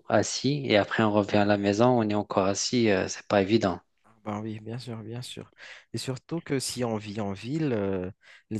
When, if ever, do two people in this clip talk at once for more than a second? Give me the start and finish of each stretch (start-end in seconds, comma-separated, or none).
none